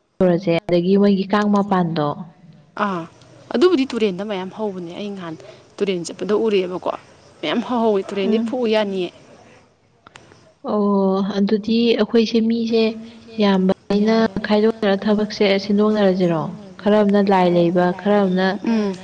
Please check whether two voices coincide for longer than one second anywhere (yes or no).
no